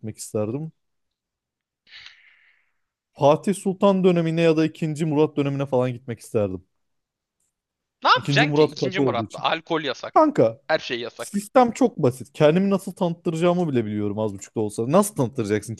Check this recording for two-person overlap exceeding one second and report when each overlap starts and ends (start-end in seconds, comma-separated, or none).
8.1-9.4